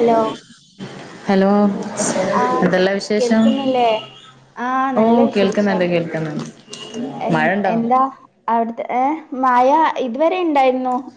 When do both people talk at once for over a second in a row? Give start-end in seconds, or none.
none